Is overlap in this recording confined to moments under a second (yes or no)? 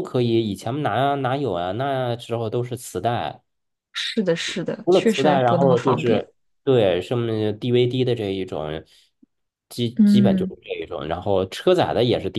no